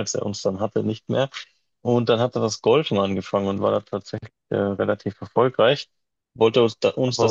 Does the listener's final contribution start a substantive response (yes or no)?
no